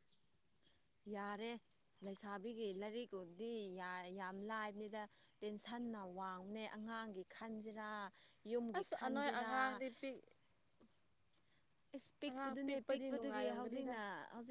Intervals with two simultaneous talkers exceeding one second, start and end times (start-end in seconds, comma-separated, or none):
12.3-13.9